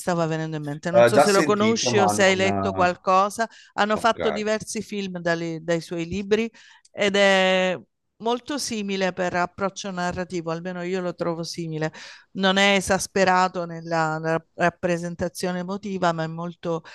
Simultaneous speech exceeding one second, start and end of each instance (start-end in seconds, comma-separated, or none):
0.9-3.0